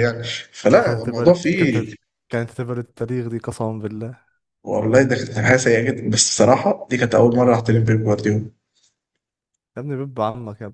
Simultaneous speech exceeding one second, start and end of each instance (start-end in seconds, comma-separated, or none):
0.7-1.9